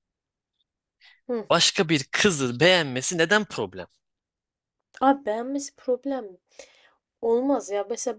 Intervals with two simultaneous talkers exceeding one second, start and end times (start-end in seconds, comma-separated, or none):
none